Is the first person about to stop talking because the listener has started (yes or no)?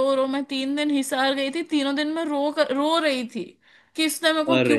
no